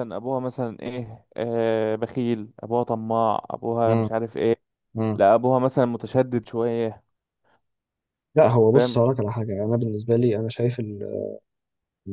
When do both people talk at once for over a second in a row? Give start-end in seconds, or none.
none